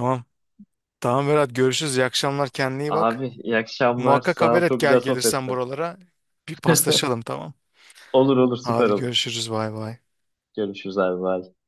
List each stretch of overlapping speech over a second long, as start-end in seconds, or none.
4.0-5.5